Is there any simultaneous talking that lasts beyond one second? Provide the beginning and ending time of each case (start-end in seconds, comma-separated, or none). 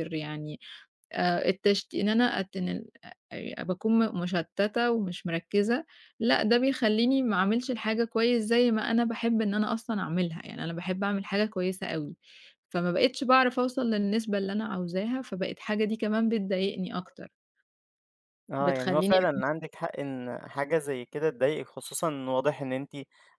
none